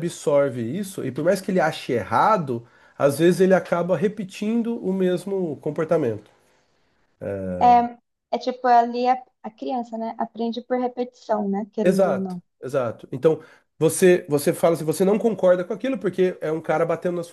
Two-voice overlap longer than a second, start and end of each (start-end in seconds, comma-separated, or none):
none